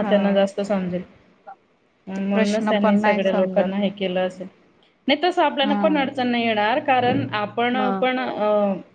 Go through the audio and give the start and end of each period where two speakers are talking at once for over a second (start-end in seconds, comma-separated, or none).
2.1-3.7